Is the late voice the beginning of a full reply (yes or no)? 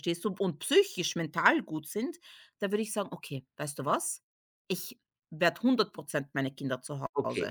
yes